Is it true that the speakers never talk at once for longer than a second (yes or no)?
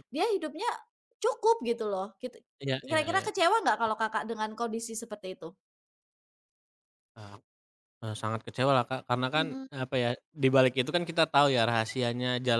yes